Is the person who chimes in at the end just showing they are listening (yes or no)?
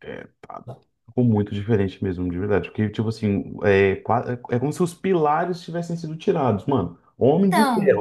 yes